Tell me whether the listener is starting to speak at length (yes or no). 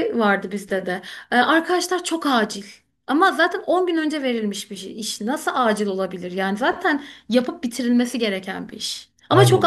no